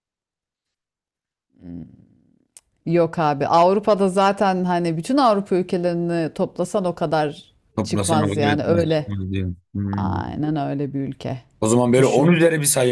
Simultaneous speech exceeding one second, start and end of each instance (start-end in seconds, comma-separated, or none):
7.8-9.1